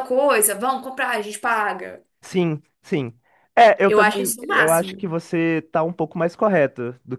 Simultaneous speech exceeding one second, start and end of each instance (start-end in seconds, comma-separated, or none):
3.9-5.1